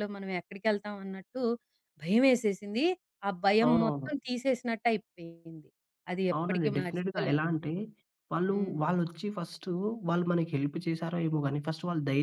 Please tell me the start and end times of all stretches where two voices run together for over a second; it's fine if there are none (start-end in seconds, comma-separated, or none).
6.3-7.7